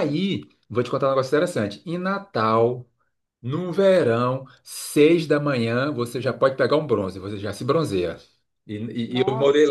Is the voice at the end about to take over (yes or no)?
no